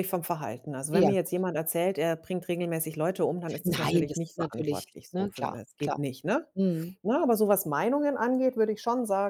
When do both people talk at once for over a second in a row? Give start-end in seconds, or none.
3.6-6.0